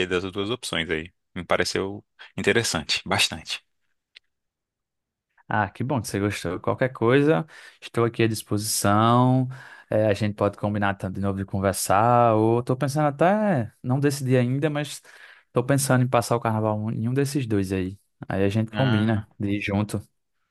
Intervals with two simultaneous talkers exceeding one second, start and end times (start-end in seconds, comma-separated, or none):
none